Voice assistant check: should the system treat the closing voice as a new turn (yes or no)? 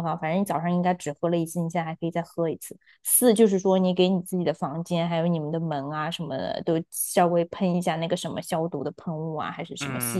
yes